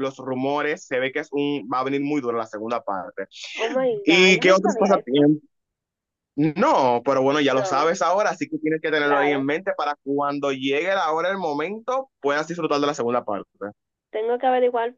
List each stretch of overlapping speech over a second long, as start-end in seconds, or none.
4.0-5.2